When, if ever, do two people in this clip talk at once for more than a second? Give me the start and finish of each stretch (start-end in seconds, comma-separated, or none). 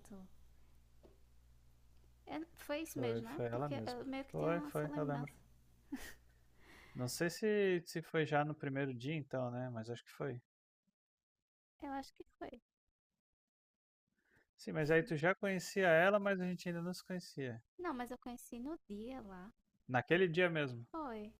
2.9-5.3